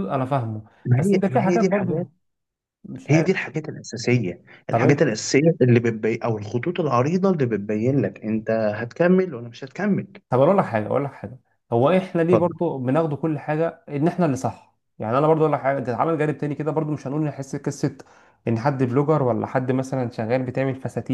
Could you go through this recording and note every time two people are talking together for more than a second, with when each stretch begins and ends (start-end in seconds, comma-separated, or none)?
0.8-2.1